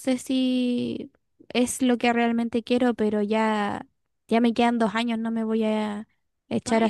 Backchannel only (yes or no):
no